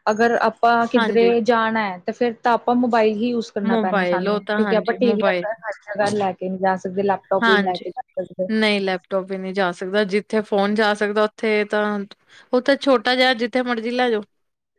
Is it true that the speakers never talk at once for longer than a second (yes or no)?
no